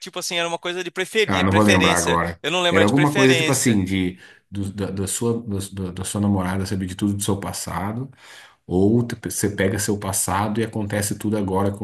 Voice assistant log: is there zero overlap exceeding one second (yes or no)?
no